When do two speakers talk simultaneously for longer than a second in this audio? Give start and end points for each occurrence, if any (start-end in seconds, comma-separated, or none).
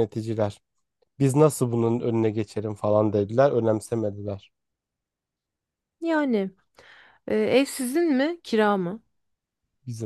none